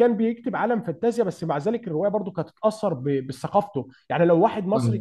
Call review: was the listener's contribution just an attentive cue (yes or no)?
yes